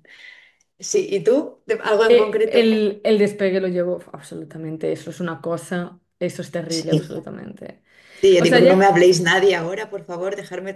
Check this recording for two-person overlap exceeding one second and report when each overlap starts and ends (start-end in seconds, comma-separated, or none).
none